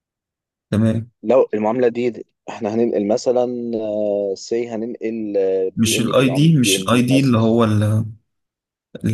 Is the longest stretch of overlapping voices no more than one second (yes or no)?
no